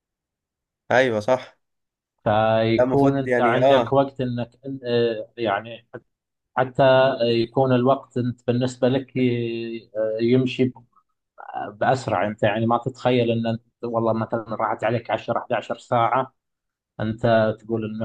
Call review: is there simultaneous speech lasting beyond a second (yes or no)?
yes